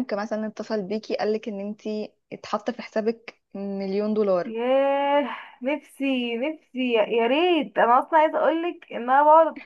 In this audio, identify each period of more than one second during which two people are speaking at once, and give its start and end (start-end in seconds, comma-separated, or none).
none